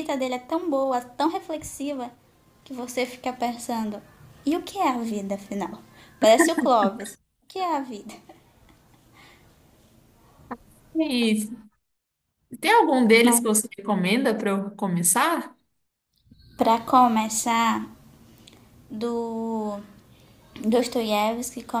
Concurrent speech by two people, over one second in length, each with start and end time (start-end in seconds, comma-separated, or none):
none